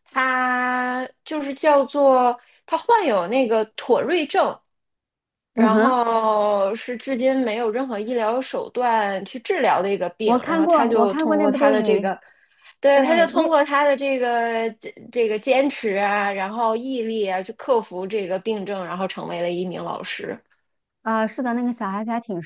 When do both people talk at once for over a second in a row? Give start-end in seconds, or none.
10.2-12.1